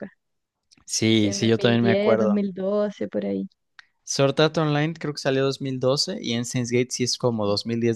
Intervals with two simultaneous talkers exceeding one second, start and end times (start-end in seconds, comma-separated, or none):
1.1-2.4